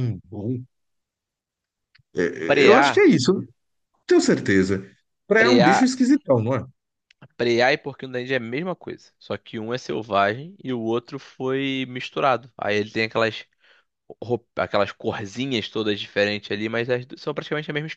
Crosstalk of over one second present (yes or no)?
no